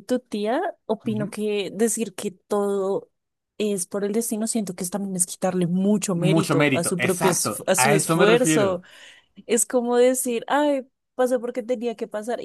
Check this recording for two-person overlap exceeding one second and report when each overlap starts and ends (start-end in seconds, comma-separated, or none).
6.1-8.8